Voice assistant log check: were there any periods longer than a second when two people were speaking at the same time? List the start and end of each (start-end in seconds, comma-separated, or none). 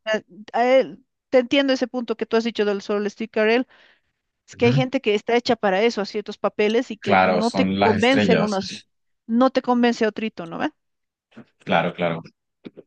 7.0-8.6